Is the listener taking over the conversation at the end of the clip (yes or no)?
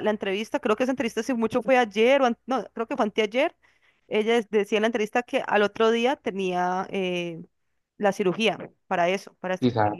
no